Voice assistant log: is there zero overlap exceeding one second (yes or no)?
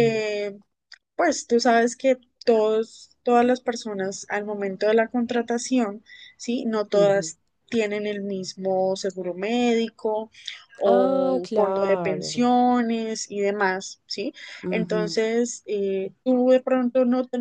no